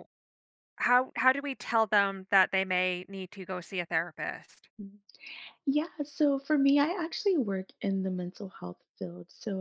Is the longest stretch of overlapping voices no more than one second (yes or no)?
yes